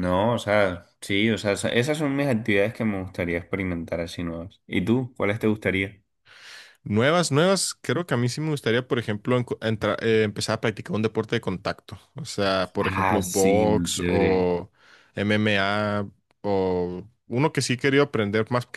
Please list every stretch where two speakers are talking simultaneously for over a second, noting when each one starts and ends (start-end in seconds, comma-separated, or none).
12.8-14.5